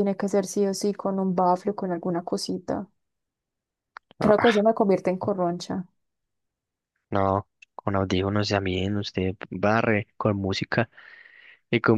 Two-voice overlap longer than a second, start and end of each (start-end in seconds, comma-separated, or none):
none